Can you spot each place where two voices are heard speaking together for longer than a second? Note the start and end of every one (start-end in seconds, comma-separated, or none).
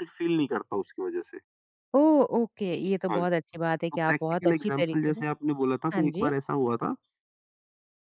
3.9-5.2